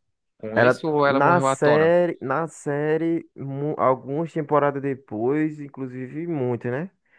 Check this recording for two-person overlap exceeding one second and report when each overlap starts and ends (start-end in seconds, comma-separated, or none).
0.6-1.9